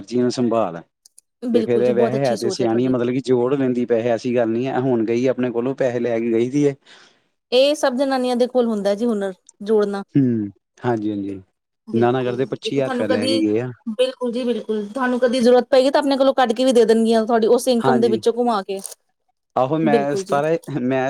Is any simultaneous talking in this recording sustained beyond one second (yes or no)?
yes